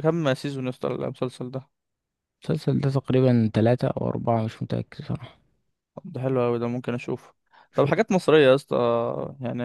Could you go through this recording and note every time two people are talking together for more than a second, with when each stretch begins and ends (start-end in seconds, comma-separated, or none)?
none